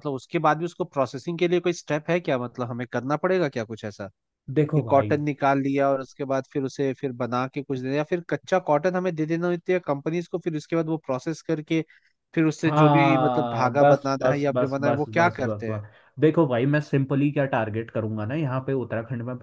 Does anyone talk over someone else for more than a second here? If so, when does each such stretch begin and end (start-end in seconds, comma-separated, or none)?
12.6-15.8